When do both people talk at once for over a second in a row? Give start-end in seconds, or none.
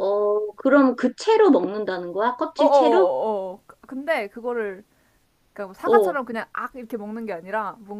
none